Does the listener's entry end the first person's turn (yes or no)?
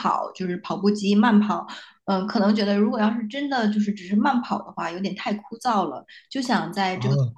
no